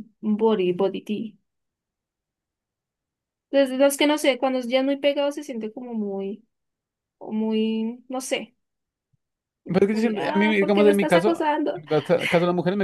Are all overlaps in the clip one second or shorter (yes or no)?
no